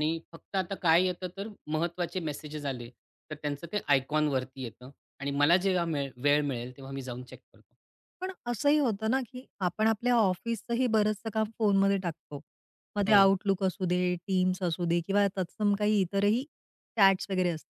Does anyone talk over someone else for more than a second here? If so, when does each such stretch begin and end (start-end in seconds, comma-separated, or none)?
none